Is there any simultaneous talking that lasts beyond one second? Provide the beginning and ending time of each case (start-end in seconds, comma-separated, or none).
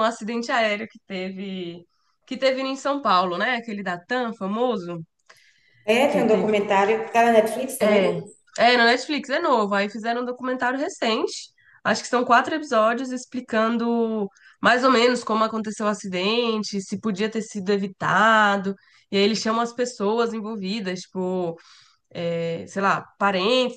none